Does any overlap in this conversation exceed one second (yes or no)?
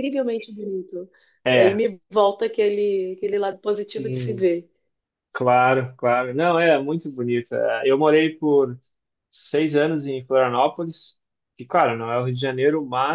no